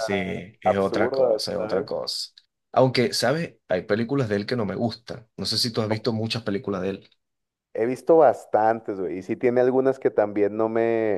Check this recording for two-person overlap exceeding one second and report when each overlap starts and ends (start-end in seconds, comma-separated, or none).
0.6-1.9